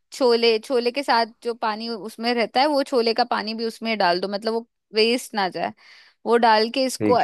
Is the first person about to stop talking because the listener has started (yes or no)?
no